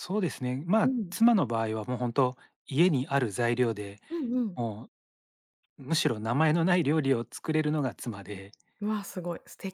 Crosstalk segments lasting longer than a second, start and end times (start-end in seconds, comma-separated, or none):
none